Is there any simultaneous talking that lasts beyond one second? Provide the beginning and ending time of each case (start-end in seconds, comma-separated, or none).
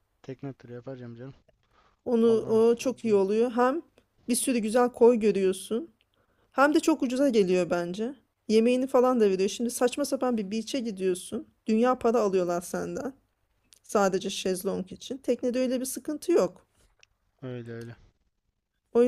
none